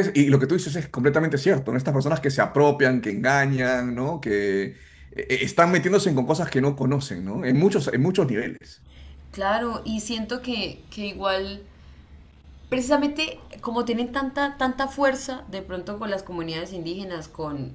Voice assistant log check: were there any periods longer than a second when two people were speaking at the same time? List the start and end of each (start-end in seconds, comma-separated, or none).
none